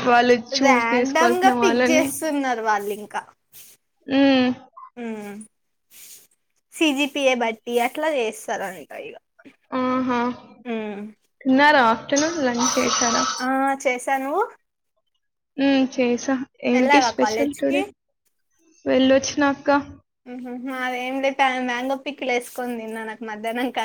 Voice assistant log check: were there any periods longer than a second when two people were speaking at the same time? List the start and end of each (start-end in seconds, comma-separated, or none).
0.6-2.0